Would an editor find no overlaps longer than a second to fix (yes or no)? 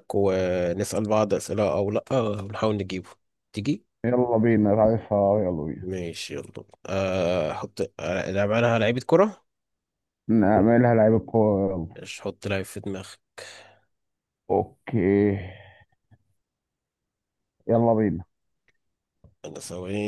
yes